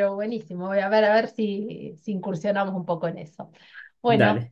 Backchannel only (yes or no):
yes